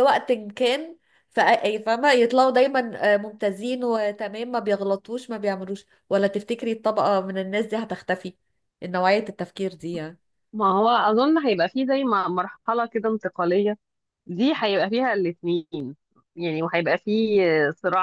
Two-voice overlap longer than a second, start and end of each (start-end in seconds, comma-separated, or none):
none